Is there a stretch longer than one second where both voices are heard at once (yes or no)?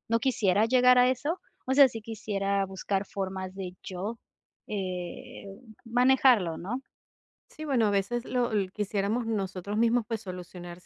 no